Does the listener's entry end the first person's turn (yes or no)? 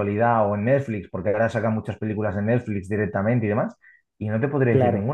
no